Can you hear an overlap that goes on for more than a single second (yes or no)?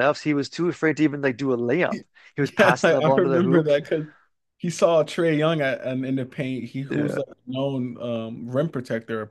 yes